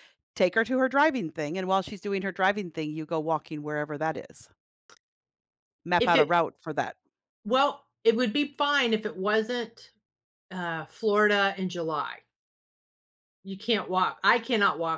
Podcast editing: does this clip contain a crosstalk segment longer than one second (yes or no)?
no